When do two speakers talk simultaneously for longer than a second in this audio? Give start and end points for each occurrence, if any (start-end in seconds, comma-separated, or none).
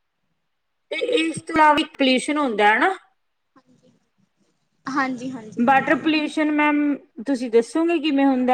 none